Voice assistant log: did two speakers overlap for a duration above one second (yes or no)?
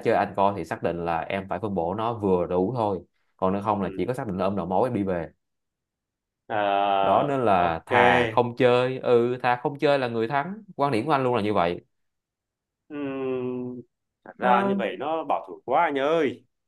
yes